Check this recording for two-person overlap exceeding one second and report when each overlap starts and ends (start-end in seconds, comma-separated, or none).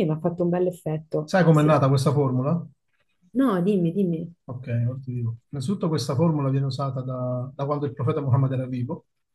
none